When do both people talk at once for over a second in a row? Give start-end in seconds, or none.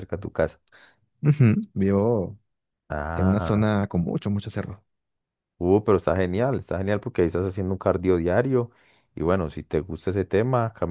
none